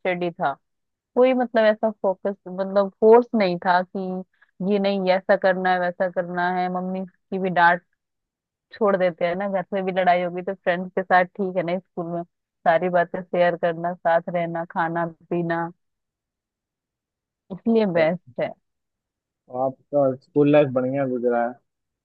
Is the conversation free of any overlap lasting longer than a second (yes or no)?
yes